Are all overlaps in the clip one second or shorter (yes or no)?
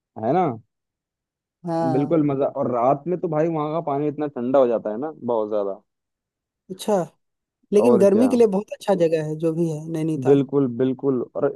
yes